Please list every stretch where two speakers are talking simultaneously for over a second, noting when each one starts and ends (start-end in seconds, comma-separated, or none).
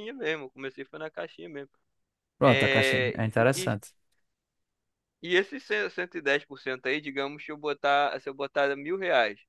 2.4-3.8